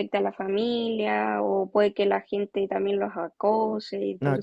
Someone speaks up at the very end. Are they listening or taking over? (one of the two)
taking over